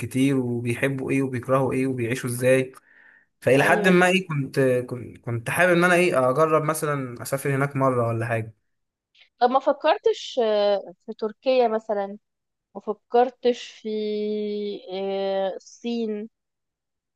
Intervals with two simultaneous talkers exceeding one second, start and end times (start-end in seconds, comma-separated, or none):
none